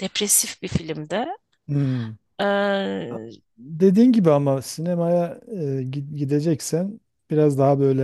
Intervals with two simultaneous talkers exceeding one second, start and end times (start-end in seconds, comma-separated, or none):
none